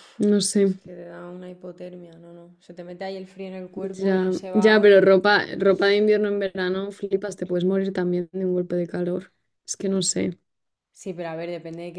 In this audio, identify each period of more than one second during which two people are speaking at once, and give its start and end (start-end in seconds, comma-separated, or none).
3.7-5.1